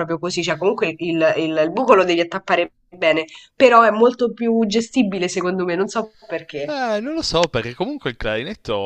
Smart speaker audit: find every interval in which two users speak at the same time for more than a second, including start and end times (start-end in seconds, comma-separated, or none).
none